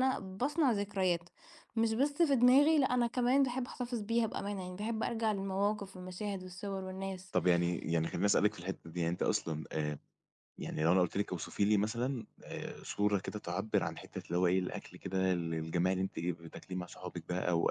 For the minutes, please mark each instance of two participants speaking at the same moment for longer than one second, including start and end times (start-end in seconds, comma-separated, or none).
none